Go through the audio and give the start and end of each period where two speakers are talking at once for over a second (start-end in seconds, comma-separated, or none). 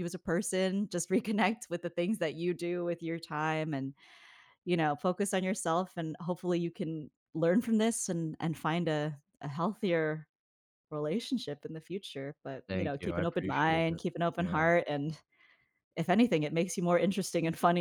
12.7-14.6